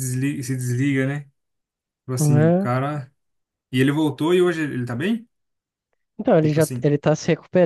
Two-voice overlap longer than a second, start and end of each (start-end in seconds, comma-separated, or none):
none